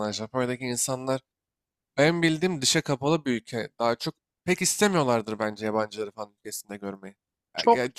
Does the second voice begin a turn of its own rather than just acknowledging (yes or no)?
yes